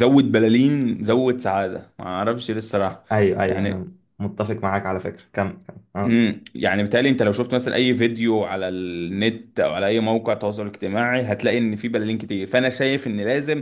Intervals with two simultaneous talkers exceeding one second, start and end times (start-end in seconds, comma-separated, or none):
none